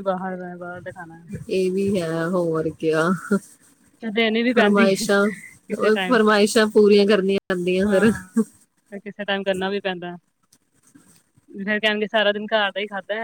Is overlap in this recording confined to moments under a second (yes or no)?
yes